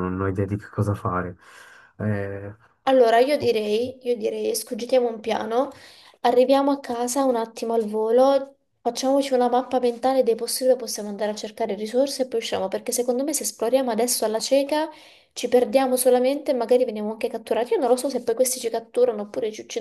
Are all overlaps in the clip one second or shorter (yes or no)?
yes